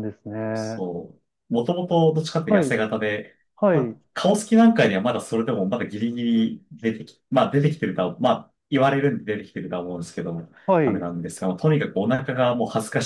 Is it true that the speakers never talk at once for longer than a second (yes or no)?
yes